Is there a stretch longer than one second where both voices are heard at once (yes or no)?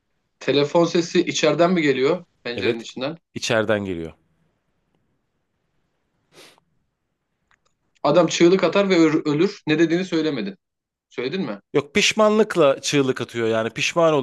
no